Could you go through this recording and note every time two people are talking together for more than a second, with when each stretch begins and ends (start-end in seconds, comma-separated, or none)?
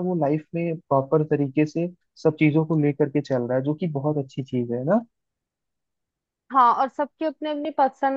none